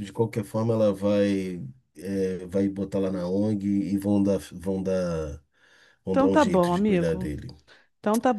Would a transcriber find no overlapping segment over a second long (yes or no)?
no